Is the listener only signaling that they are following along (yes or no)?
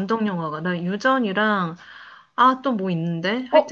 no